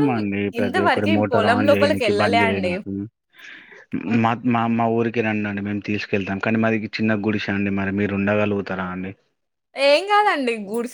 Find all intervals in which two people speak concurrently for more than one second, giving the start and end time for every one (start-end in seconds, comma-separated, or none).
0.6-2.7